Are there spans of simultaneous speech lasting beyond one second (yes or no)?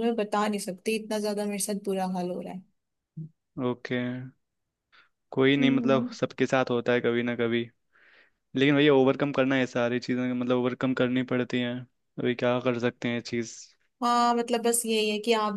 no